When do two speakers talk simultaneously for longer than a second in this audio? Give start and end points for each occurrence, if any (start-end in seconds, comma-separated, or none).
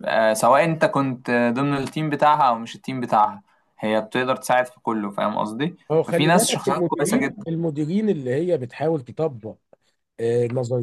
5.9-7.4